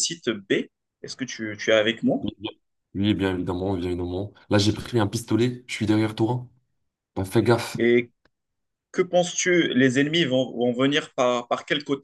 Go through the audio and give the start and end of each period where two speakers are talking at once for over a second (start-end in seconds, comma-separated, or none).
none